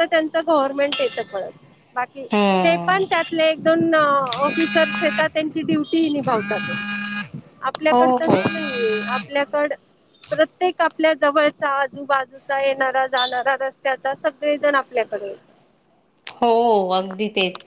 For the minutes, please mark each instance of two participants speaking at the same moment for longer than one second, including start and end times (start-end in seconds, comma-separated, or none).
none